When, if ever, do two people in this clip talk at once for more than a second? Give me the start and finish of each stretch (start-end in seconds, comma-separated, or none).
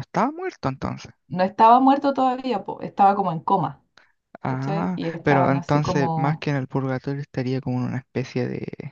4.5-6.5